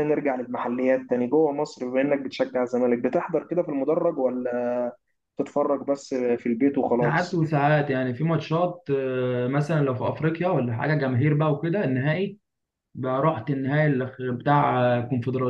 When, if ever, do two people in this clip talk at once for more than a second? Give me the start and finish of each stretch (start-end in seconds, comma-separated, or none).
none